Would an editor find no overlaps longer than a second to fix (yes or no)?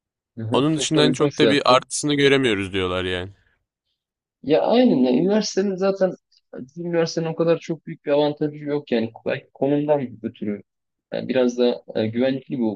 no